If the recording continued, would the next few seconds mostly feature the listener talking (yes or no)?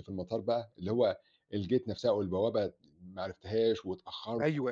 yes